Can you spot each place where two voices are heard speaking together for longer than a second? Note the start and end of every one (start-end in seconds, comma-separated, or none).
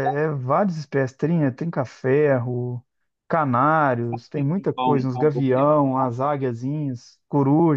4.1-5.8